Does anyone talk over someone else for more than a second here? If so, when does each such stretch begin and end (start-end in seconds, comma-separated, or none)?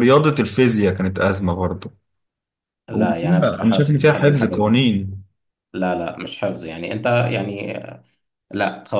2.9-4.8